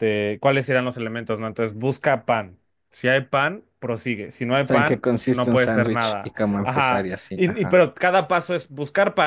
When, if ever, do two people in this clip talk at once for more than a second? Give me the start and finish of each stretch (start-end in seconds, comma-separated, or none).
4.6-7.8